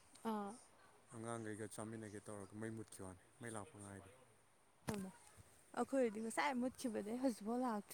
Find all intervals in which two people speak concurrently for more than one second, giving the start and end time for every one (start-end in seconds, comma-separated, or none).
none